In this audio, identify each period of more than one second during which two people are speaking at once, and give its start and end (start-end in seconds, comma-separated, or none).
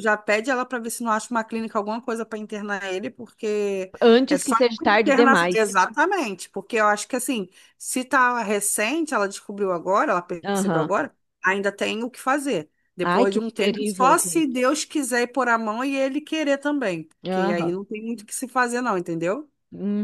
4.0-5.8, 13.0-14.7